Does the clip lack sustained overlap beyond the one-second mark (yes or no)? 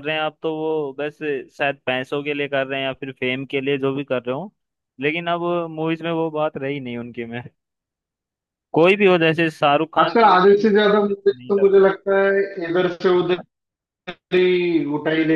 no